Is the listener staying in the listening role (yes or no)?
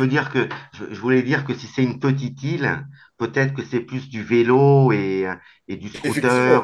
no